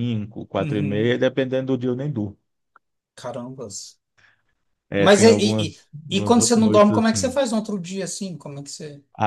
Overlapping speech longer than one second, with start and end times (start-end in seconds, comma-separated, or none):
5.0-7.3